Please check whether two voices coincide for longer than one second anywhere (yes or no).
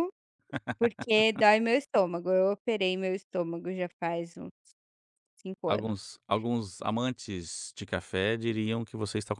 no